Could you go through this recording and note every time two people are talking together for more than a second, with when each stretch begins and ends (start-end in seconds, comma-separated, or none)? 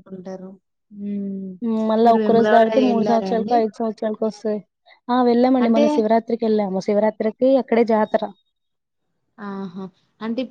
2.0-3.5